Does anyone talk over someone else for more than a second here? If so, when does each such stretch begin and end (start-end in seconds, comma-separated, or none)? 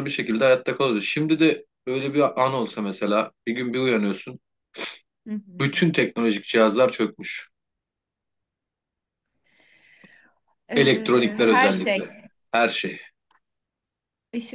10.8-12.1